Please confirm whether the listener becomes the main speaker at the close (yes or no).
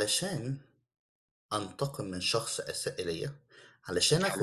no